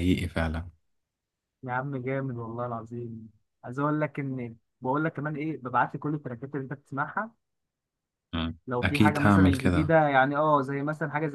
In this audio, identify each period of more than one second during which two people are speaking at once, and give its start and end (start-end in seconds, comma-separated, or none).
8.7-9.9